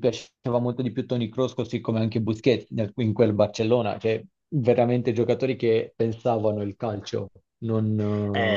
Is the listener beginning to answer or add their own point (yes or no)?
yes